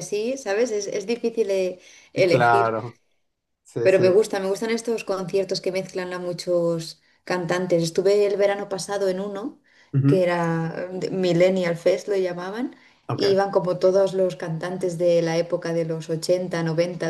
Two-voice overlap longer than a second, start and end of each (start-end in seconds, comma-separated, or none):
none